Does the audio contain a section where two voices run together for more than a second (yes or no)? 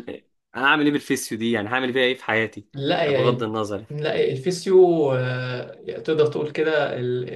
no